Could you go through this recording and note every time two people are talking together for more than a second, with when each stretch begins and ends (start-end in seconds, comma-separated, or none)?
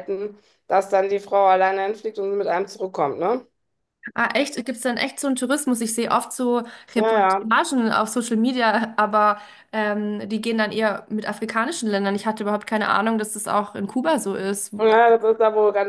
none